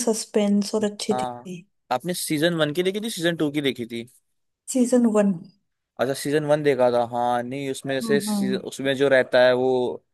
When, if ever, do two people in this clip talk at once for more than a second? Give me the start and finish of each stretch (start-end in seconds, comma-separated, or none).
none